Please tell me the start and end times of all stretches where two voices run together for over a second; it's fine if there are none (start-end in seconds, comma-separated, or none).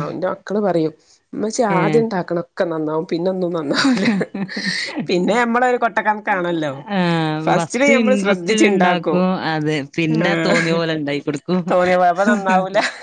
7.4-9.1